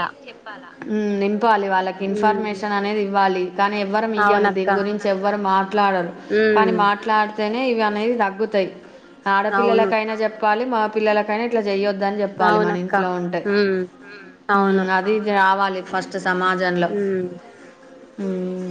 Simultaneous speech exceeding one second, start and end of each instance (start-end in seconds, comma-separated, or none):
none